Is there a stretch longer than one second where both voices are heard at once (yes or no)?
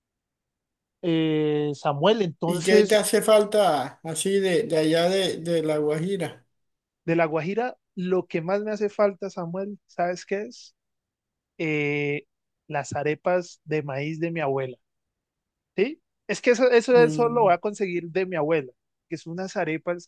no